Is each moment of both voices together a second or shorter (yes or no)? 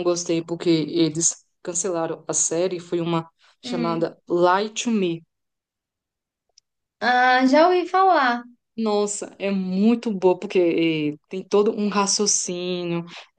yes